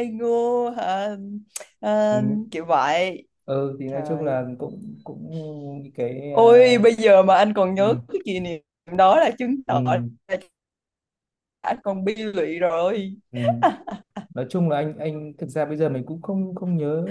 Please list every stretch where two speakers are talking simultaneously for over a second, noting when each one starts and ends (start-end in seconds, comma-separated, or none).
none